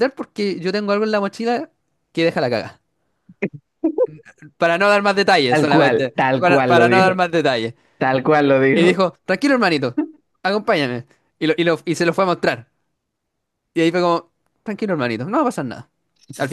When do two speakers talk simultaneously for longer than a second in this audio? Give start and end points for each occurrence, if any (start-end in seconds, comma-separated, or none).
5.5-7.2